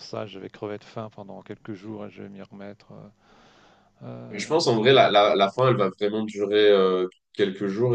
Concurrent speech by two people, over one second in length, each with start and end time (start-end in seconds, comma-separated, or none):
4.3-5.5